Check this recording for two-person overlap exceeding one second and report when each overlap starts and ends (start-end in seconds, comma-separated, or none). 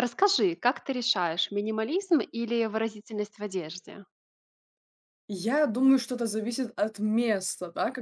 none